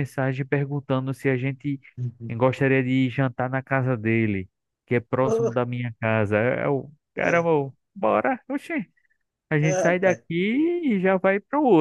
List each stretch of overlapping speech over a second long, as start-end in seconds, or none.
none